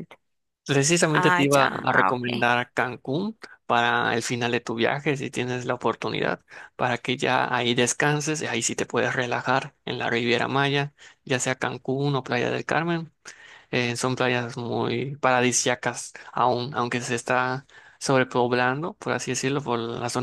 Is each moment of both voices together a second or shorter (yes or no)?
no